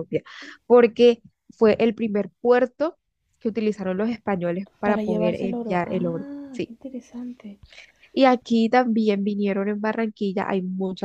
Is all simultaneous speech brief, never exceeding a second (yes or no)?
no